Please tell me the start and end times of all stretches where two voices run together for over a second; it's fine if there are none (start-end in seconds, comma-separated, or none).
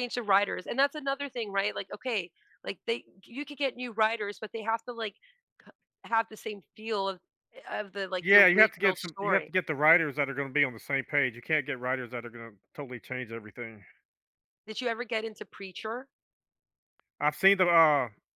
8.2-9.5